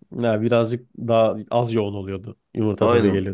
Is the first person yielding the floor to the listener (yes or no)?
yes